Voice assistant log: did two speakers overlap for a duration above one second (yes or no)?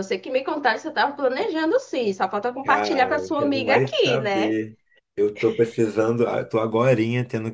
yes